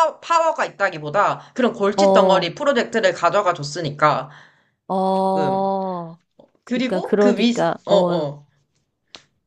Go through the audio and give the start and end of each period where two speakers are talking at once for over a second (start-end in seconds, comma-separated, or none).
6.7-8.3